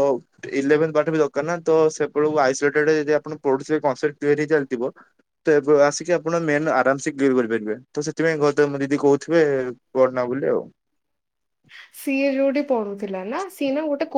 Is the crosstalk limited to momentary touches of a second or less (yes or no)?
yes